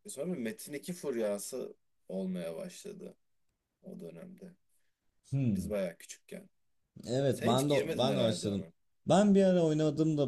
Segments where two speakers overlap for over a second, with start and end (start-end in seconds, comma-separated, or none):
7.3-8.7